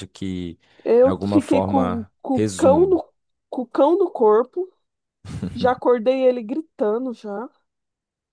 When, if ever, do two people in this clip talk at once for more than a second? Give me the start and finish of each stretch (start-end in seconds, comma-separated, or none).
1.0-3.0